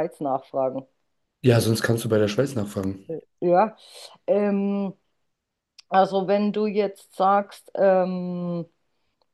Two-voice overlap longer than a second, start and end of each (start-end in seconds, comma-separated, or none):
none